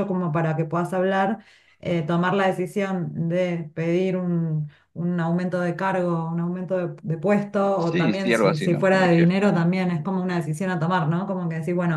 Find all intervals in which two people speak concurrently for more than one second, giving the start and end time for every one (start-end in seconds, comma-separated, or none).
7.8-9.3